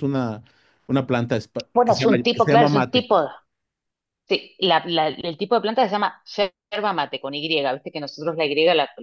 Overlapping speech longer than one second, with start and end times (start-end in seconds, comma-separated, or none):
1.8-3.1